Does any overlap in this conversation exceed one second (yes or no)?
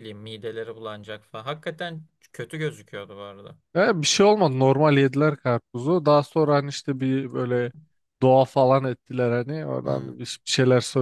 no